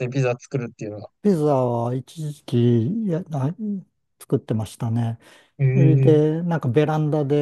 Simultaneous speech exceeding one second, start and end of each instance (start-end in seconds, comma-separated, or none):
none